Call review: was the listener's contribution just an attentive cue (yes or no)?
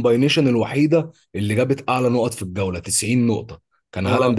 yes